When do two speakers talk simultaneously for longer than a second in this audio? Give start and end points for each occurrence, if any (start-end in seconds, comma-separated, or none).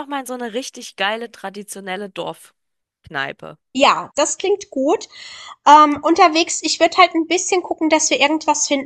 none